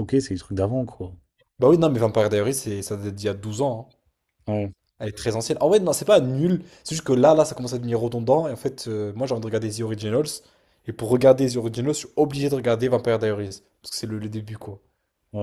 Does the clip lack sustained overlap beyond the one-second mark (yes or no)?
yes